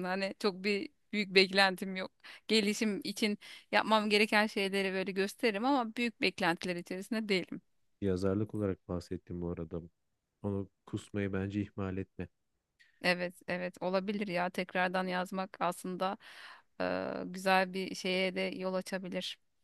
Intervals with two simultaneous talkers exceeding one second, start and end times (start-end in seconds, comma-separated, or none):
none